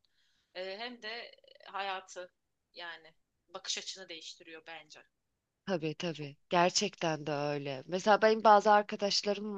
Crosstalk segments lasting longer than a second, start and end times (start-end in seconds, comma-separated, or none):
none